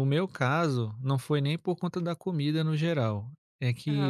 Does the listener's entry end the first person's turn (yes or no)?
no